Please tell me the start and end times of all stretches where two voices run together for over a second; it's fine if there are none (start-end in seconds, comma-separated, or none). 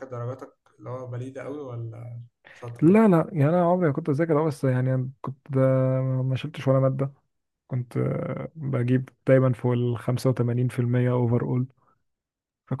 none